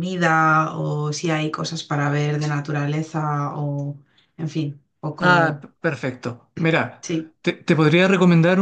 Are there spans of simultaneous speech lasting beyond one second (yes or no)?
no